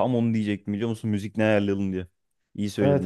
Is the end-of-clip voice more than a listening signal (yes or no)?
yes